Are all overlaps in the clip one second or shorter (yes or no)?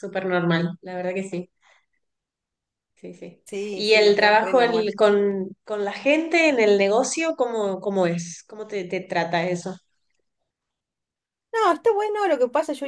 no